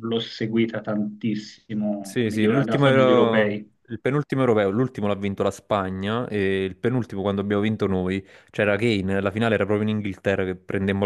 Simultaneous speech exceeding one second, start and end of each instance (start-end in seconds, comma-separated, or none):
2.0-3.7